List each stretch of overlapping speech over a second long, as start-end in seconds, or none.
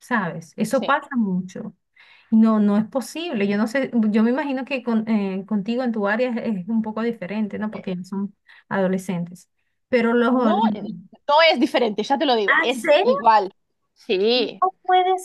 none